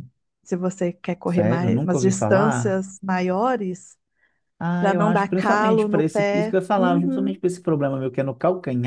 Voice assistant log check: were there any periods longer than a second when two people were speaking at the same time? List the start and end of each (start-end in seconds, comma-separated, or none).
1.3-2.8, 4.8-7.4